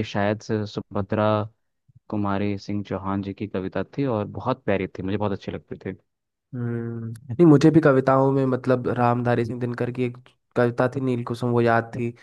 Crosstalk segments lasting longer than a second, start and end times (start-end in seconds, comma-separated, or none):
none